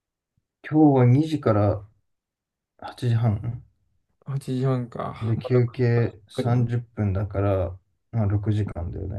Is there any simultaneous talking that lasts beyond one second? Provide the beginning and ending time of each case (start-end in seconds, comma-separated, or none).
5.2-6.7